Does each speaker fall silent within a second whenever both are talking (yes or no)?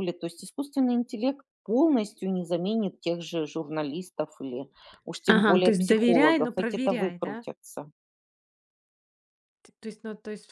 no